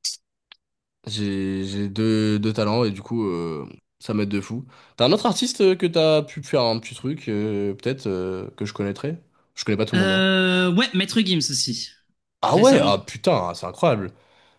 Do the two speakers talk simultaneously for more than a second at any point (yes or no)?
no